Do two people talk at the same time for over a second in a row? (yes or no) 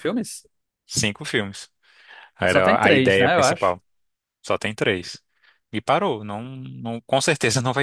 yes